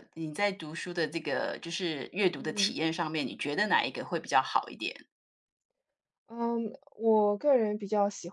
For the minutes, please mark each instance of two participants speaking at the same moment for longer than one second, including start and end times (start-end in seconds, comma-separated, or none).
none